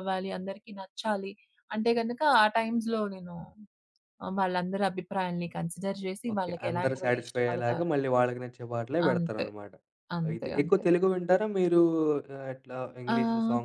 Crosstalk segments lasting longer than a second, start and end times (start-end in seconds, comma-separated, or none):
6.3-7.9